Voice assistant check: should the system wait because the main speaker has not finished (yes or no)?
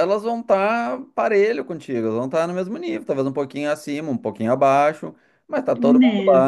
yes